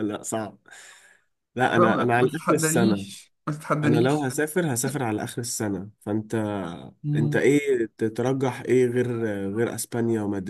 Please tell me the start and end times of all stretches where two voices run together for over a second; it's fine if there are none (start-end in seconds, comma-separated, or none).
1.8-3.1